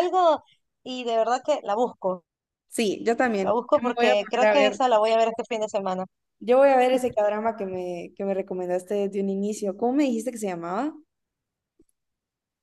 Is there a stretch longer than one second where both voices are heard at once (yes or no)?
yes